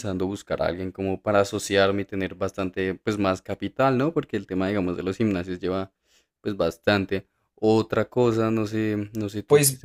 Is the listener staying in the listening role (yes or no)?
yes